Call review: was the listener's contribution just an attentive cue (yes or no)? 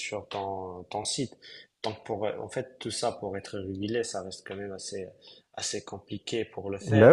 yes